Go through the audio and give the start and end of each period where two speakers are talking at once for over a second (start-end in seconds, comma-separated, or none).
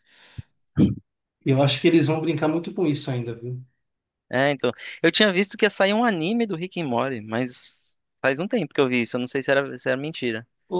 none